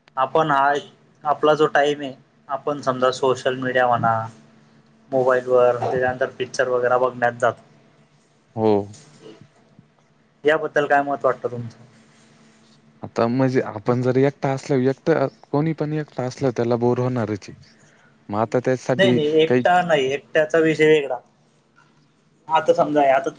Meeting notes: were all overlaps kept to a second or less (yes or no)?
yes